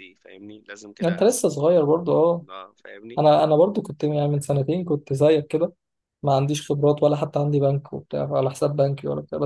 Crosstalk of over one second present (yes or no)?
no